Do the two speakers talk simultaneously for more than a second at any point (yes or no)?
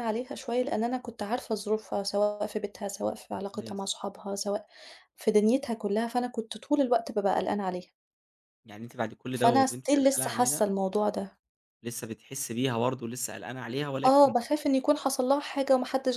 yes